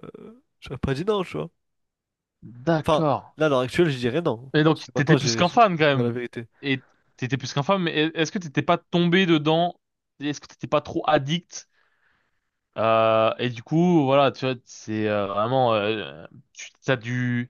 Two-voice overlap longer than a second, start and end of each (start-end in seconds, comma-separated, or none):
4.5-6.2